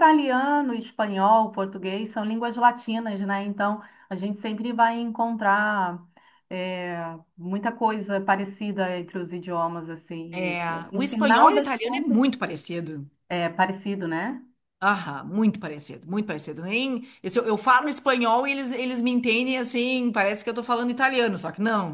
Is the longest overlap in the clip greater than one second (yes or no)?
yes